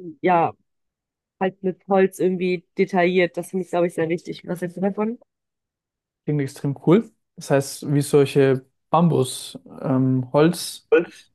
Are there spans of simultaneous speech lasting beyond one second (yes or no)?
no